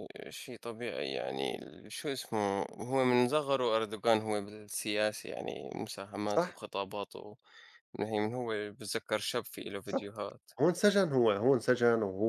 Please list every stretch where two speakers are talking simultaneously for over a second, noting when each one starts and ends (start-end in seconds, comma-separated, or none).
none